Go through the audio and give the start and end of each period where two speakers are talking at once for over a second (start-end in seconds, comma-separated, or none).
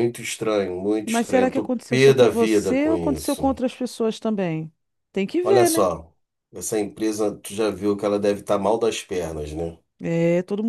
1.0-3.5